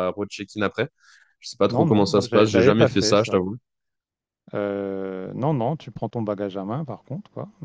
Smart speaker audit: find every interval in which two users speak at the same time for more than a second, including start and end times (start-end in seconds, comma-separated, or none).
1.7-3.4